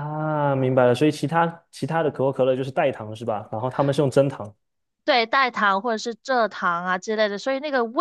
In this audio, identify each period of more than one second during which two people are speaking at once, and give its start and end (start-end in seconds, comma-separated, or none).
none